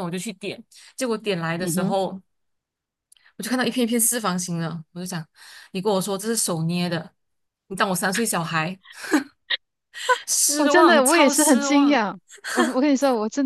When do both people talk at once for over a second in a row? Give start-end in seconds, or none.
10.6-12.0